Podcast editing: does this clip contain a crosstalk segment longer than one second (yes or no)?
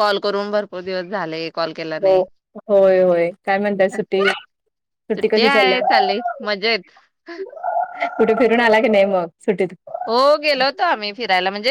no